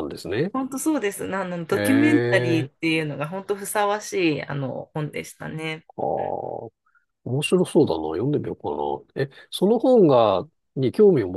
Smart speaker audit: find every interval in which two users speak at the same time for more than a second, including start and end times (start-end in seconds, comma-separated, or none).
1.7-2.9